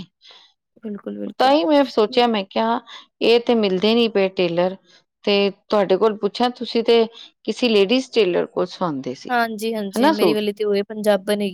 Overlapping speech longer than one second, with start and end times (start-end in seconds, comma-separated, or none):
none